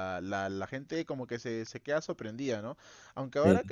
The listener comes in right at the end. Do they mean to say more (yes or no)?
no